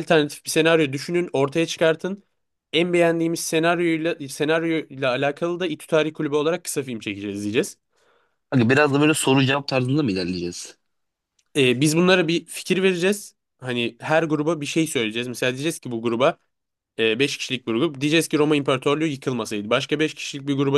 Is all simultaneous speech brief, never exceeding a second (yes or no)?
yes